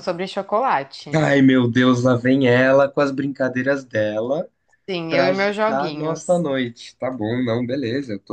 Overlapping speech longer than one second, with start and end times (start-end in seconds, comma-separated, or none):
5.1-6.4